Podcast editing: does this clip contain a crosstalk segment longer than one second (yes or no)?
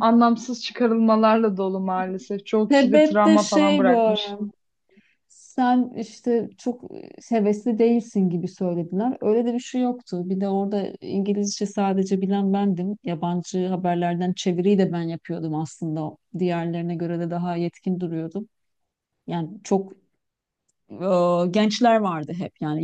yes